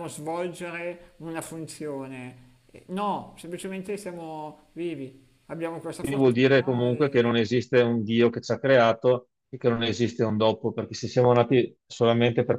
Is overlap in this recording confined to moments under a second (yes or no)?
no